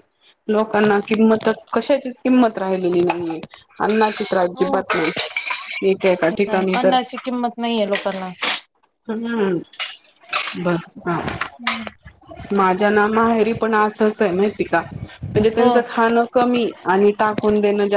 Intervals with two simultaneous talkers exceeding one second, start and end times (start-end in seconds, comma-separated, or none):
none